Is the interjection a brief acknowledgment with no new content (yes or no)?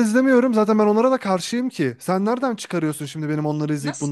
no